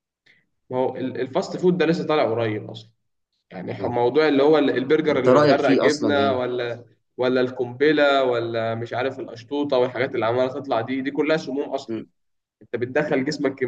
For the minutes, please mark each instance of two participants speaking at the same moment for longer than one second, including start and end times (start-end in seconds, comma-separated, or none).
5.1-6.4